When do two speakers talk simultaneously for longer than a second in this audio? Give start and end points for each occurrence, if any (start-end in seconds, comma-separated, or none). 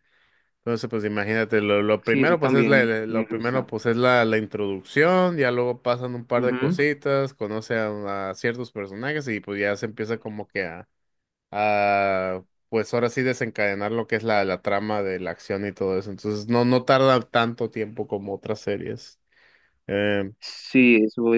2.0-3.7